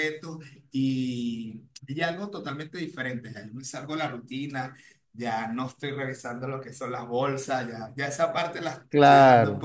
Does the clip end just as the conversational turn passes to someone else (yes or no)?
no